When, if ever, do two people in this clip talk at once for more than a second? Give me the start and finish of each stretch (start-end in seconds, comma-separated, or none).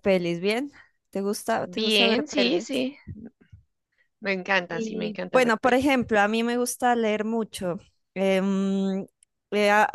1.6-2.9, 4.7-6.0